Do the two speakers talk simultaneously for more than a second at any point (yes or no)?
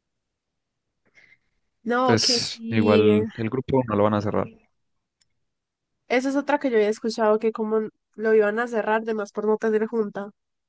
yes